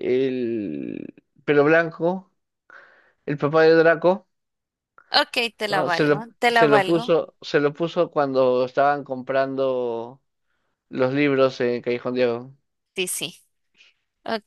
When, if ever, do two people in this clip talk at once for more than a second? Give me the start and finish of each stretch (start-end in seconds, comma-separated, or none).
5.7-7.1